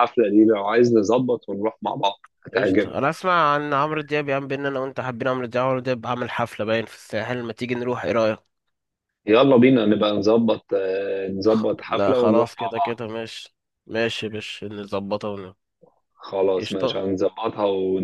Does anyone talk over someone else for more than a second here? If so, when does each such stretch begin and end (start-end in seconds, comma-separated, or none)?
11.5-13.0